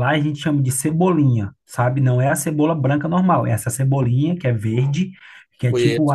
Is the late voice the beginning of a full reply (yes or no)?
no